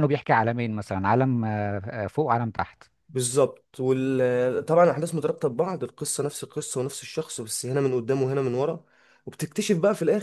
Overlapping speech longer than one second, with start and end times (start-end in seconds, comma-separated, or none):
none